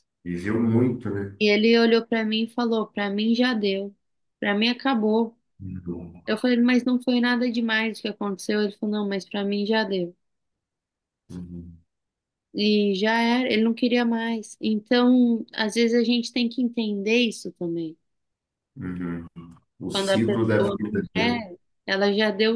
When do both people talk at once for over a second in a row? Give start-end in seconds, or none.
19.9-21.4